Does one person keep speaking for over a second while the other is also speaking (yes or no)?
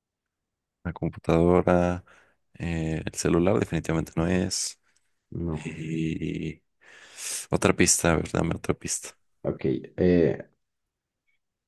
no